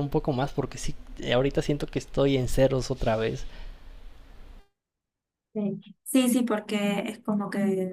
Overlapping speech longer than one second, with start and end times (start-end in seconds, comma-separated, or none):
none